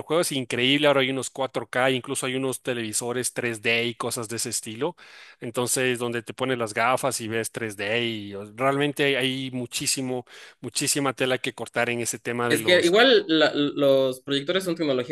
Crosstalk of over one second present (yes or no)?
no